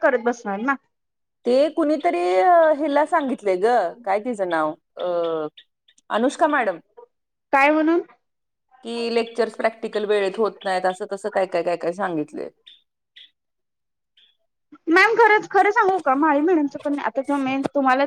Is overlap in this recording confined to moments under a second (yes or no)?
yes